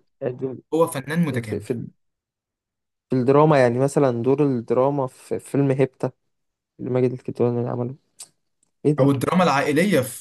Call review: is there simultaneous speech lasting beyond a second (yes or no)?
no